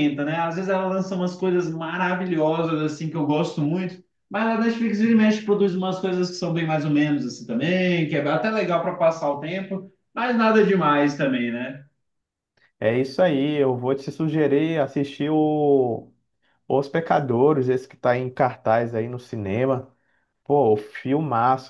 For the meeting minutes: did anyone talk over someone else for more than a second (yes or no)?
no